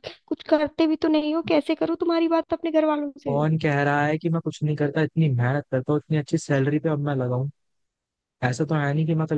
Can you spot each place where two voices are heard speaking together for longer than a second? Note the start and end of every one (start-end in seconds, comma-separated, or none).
none